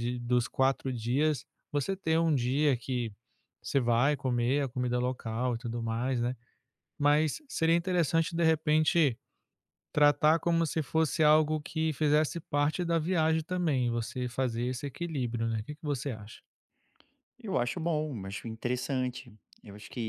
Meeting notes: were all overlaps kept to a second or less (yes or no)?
yes